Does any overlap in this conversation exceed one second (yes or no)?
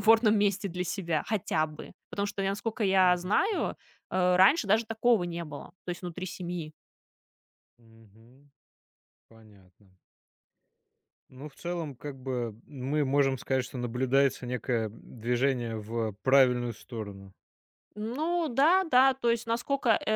no